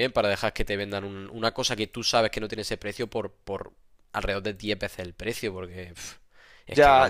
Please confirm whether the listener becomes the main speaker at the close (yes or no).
yes